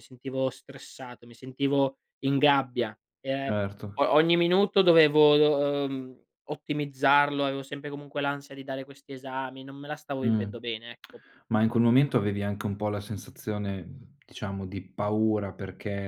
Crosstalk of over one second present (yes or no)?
no